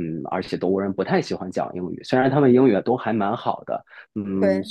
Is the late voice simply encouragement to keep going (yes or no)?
yes